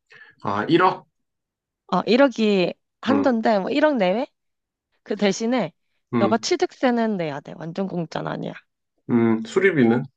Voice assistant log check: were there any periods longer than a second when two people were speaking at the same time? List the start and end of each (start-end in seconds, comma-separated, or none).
none